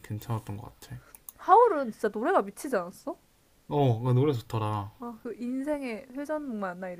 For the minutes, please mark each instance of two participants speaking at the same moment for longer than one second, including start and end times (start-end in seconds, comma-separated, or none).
none